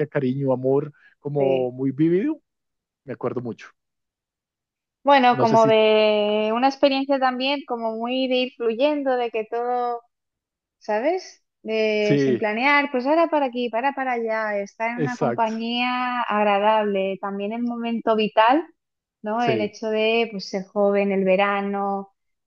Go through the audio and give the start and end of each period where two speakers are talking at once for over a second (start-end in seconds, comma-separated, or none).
none